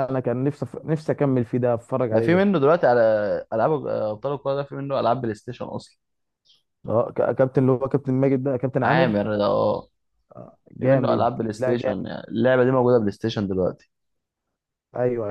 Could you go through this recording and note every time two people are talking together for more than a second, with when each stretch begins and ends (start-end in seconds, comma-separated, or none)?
10.8-12.1